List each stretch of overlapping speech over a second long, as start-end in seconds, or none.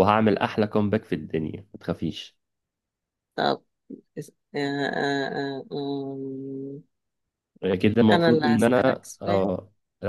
8.1-9.5